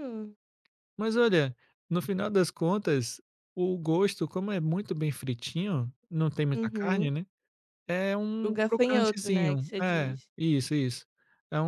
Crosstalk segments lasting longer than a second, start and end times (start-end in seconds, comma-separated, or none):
8.4-10.3